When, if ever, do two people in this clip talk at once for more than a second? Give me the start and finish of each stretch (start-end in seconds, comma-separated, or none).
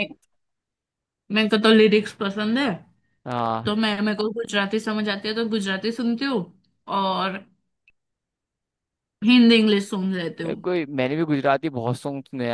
none